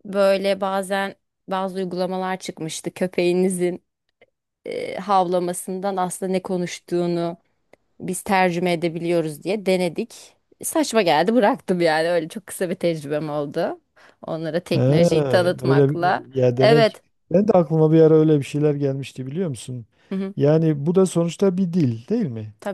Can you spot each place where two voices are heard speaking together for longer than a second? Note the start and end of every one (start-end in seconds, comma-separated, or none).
15.6-17.0